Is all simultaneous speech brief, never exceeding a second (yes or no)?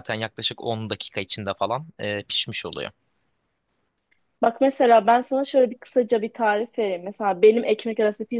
yes